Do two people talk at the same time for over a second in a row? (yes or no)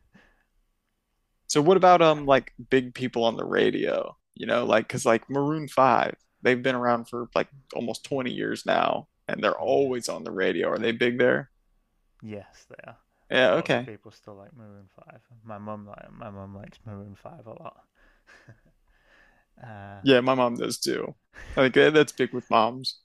no